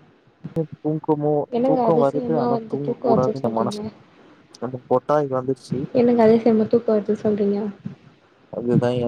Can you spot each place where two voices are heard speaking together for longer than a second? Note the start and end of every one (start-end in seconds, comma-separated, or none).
1.6-3.8